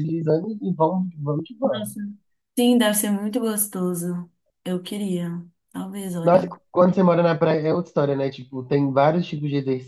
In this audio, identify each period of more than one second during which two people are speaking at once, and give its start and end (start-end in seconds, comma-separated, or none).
none